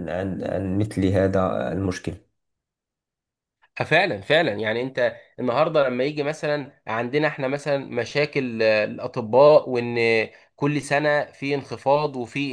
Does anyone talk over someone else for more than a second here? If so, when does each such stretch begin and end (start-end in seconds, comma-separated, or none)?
none